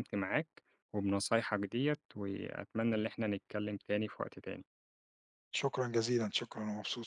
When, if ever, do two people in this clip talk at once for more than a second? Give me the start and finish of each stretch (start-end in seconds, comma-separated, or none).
none